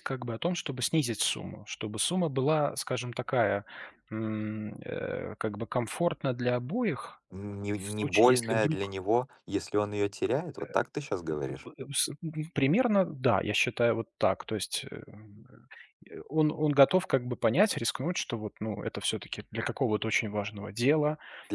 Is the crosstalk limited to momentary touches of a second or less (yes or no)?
no